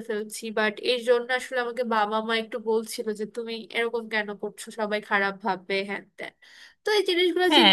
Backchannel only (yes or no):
no